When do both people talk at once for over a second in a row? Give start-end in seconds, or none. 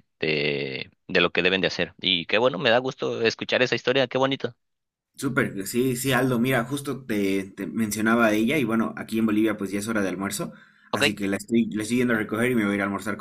none